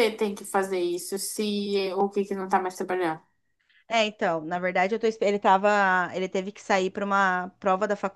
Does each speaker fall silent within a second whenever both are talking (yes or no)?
yes